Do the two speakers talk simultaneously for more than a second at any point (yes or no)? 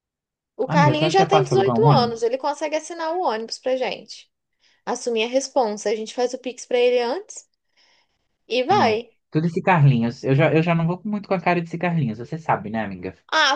yes